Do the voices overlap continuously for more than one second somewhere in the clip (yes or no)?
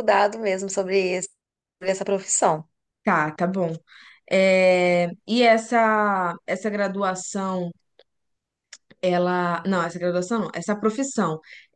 no